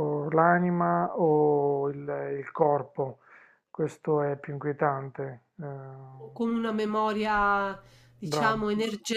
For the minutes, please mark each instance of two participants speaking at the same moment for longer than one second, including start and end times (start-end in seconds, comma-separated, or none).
none